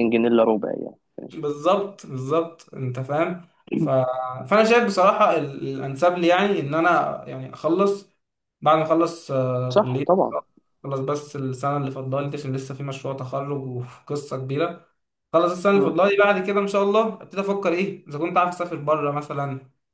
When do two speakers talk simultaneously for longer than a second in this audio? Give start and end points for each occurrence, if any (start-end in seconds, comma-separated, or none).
none